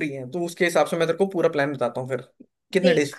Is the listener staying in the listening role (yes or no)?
no